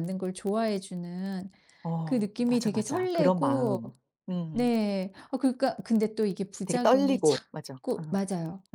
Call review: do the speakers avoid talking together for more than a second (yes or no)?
no